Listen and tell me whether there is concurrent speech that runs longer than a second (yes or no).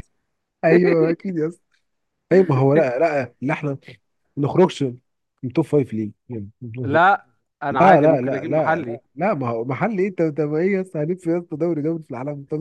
yes